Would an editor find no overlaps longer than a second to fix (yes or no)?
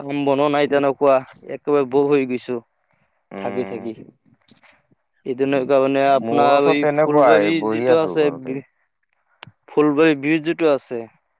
no